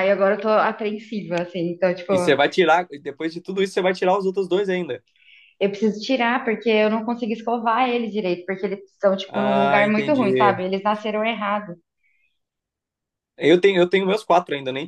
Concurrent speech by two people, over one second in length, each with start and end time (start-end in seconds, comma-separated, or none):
9.3-10.6